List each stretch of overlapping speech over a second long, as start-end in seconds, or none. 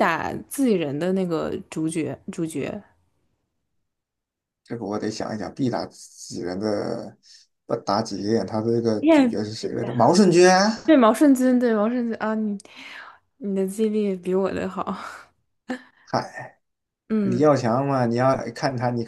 none